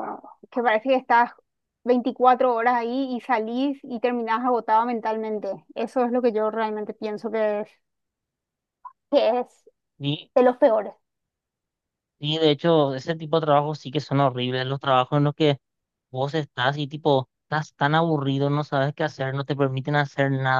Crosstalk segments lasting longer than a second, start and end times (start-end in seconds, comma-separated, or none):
none